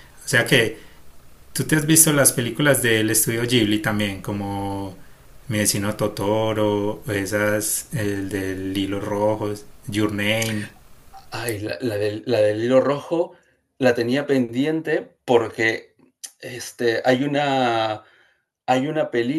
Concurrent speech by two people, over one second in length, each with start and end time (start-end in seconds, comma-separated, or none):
none